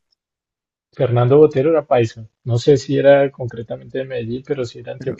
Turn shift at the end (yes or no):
yes